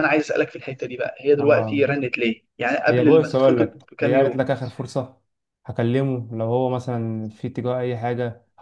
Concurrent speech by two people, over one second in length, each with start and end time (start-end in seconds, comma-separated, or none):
2.9-4.4